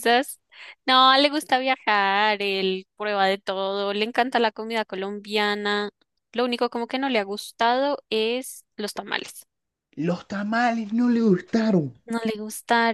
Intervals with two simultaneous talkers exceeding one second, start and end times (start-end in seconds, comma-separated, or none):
none